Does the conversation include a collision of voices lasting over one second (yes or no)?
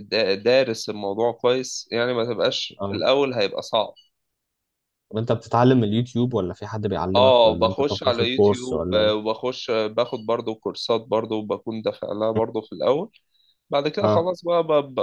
yes